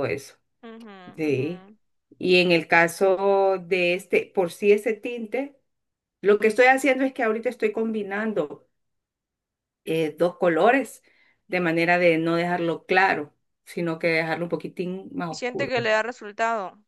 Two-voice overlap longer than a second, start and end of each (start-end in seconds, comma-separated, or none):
none